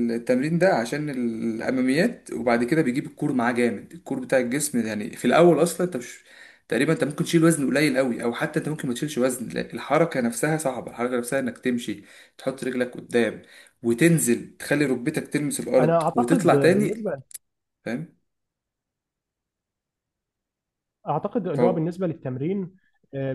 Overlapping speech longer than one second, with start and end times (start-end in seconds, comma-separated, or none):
15.8-17.1